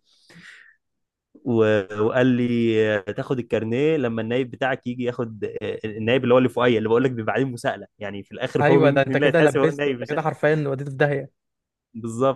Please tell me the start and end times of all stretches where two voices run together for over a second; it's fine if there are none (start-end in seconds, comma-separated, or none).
8.6-10.2